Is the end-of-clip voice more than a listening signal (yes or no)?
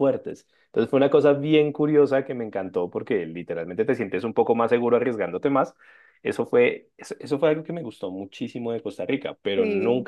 no